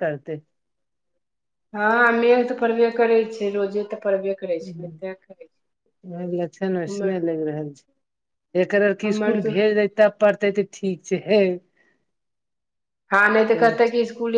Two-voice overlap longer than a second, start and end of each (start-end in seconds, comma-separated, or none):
none